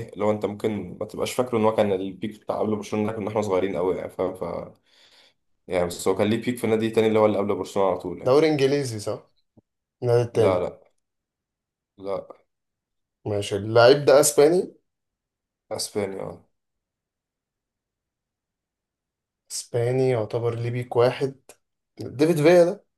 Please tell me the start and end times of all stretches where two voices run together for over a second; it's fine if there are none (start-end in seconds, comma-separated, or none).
none